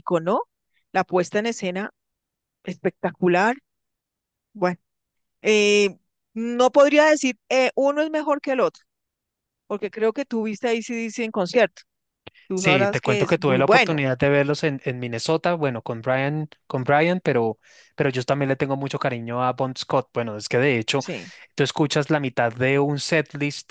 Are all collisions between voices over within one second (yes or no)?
no